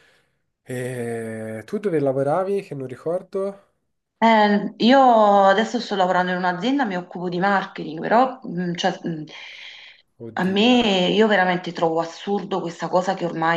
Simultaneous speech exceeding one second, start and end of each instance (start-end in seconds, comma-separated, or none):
none